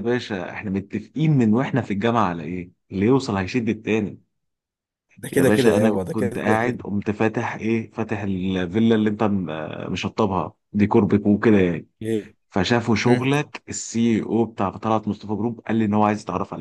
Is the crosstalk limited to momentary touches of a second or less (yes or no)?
no